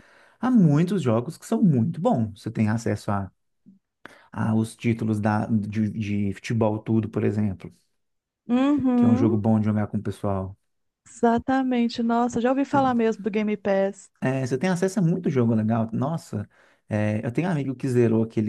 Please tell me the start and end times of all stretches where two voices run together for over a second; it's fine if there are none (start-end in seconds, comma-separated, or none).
none